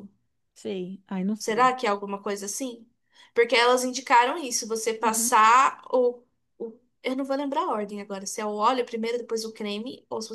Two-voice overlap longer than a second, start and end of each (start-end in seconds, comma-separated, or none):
none